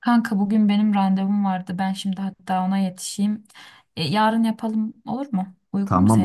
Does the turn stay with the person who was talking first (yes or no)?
no